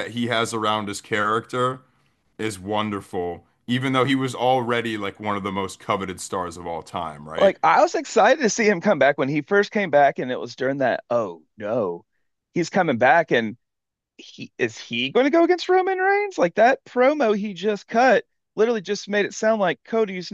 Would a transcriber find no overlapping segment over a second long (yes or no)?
yes